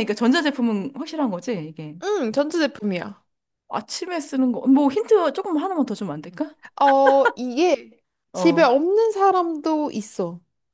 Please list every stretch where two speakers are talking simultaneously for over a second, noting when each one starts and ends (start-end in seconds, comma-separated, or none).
none